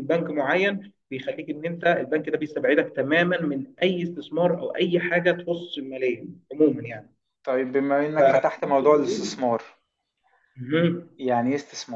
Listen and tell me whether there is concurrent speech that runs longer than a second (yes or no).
yes